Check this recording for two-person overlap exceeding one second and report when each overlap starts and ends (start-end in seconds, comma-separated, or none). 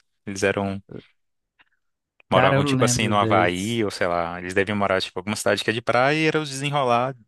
2.3-3.8